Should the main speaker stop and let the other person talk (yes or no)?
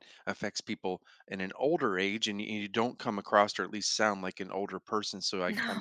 no